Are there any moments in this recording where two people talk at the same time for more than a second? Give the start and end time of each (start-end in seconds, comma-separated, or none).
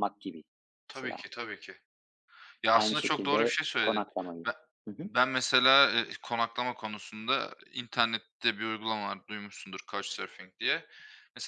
2.7-4.0